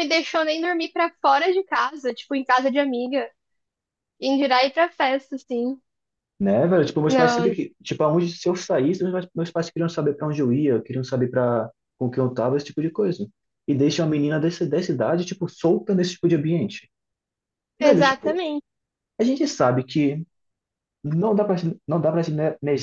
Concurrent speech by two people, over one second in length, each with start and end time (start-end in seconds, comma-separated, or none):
none